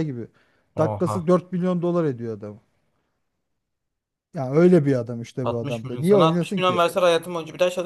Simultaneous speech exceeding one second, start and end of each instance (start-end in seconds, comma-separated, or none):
5.4-6.8